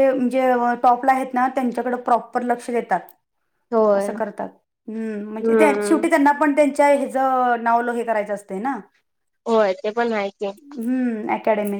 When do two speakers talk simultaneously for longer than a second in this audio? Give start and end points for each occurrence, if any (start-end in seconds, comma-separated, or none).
none